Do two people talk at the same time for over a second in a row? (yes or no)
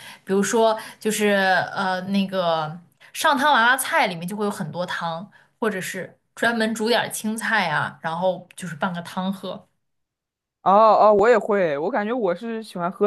no